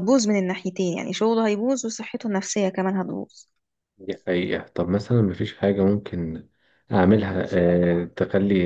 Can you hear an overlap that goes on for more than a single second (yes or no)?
no